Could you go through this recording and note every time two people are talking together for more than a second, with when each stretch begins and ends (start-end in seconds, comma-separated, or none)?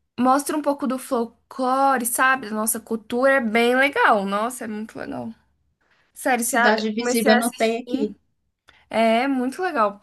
6.4-8.2